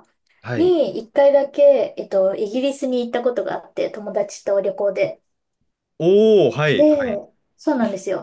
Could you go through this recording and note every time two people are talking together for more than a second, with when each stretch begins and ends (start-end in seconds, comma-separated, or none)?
none